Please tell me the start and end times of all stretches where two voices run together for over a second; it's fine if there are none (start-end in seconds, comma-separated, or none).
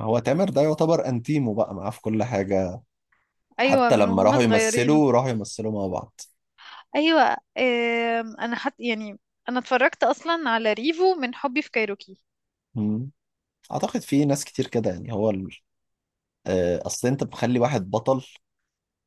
3.6-5.0